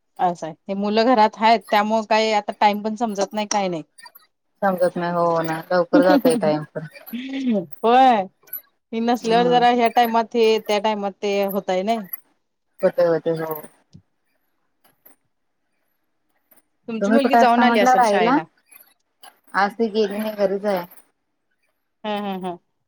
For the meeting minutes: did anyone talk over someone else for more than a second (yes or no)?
yes